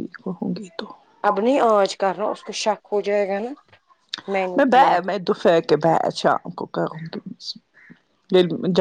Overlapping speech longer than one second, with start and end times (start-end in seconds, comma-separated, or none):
none